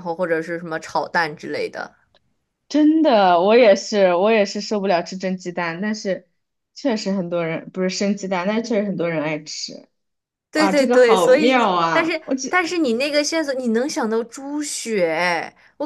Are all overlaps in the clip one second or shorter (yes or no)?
no